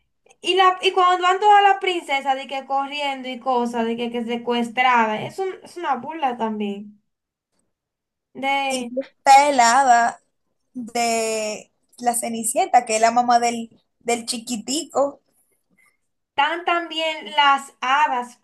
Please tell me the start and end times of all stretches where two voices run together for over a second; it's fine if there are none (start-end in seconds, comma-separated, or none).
none